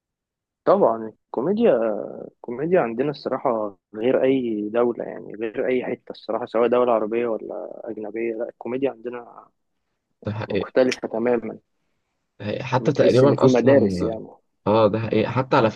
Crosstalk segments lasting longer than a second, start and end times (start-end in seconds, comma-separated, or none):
12.8-14.1